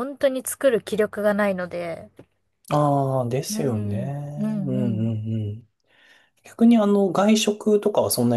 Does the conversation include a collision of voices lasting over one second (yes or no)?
no